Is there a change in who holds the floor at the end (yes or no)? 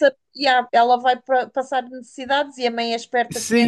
yes